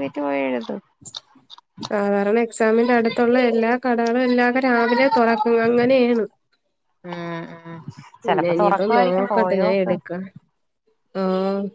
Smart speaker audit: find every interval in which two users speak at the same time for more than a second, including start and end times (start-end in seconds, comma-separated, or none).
8.2-9.9